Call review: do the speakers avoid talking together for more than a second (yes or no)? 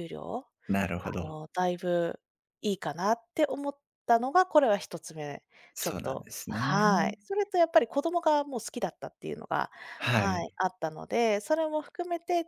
no